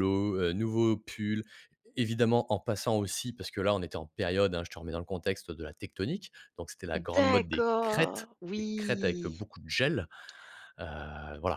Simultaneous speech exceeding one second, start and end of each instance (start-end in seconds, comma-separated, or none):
7.1-9.4